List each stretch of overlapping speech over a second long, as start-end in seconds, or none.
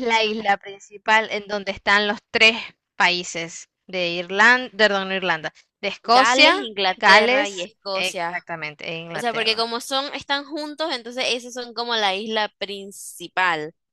6.0-8.4